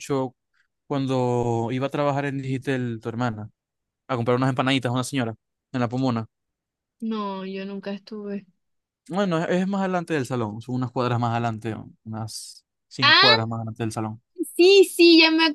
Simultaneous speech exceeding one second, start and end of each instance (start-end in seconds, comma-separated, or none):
none